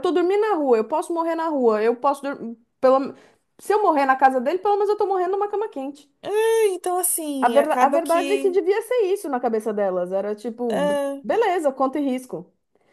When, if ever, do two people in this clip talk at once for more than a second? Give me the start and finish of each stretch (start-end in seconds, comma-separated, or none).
7.4-8.6